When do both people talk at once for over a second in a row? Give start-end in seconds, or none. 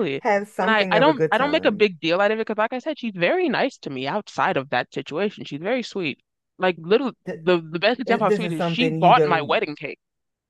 0.6-1.9, 8.1-9.6